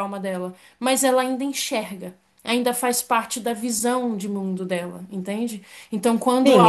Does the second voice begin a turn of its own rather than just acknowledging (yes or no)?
yes